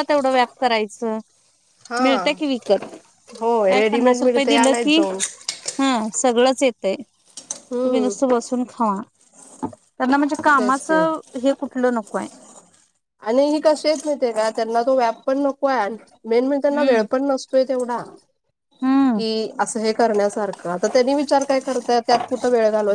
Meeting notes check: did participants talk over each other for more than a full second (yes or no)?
yes